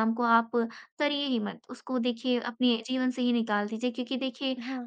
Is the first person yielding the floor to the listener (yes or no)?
no